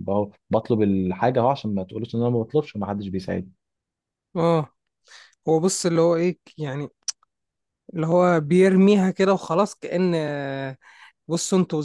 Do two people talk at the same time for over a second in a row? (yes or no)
no